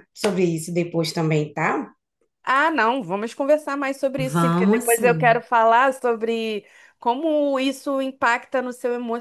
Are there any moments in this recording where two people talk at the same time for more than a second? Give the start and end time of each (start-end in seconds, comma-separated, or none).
4.2-5.4